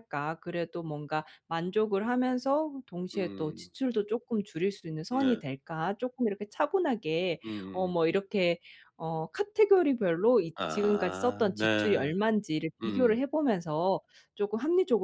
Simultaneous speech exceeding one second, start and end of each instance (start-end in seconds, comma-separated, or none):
10.5-12.0